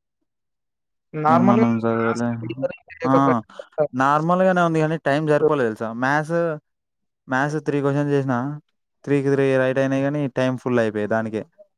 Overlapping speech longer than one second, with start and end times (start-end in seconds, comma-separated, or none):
1.3-3.1